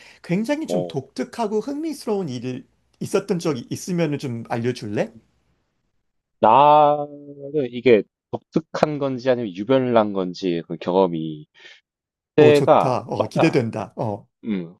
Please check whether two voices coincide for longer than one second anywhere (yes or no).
yes